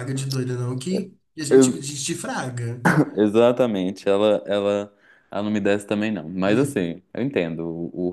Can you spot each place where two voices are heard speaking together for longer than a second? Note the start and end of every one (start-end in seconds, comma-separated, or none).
none